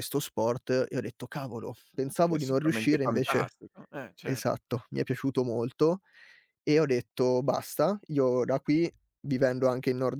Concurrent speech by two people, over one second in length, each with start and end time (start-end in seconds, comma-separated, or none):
2.2-3.5